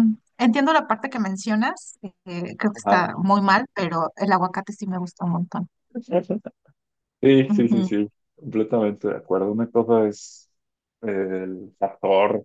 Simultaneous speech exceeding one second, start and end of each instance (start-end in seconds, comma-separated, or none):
none